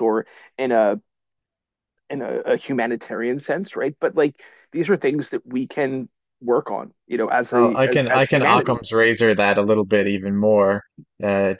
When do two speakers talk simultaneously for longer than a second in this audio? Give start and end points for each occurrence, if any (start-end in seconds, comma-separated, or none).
7.5-8.9